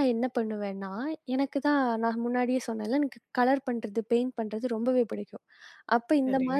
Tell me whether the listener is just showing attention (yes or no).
yes